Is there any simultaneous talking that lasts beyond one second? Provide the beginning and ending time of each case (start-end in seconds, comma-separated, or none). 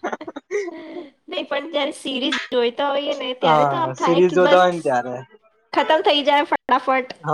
3.4-4.8